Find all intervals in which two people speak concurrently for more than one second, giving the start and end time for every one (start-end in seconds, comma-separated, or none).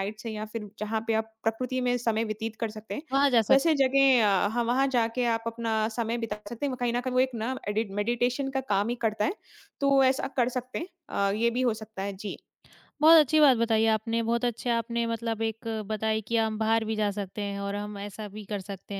none